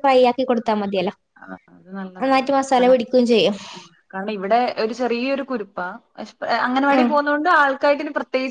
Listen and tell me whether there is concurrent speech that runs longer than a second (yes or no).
no